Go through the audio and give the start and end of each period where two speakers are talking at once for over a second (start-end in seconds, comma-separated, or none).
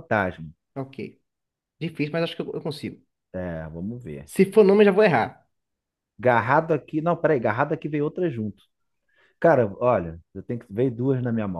none